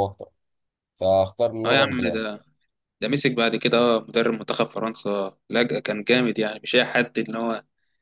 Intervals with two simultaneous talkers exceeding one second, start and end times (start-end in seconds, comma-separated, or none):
none